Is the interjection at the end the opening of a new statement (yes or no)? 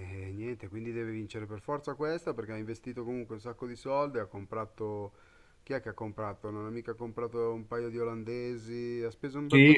yes